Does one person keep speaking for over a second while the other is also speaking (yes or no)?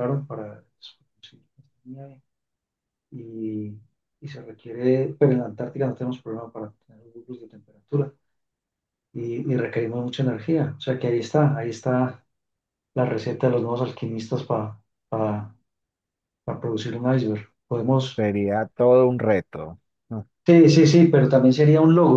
no